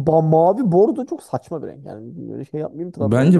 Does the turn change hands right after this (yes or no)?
yes